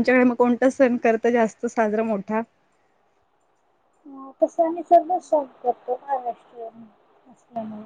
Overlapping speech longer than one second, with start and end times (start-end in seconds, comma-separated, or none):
none